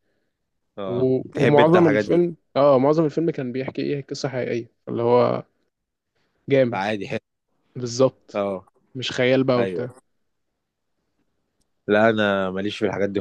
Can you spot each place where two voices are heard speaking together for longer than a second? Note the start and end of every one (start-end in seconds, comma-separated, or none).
0.9-2.2